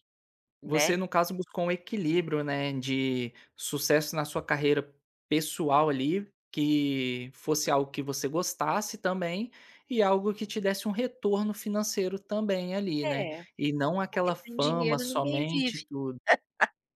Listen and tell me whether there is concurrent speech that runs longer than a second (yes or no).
yes